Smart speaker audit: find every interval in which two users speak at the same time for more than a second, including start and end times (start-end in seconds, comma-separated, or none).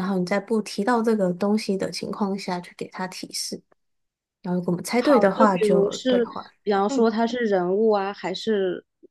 4.9-6.3